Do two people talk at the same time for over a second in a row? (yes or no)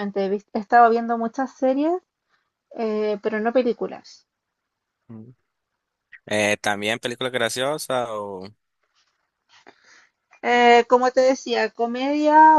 no